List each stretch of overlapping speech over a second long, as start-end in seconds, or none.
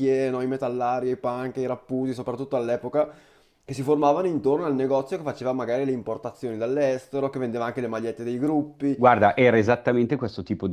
none